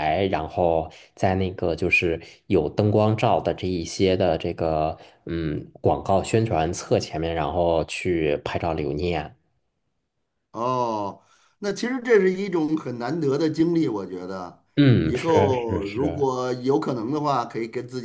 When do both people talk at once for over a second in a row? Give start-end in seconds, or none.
15.0-16.3